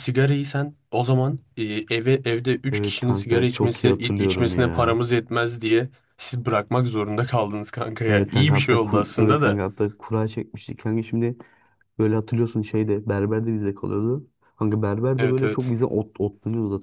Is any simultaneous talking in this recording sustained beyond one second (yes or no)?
yes